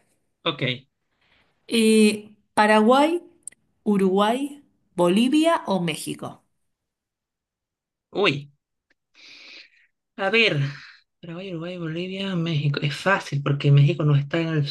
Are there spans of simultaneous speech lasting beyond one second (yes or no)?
no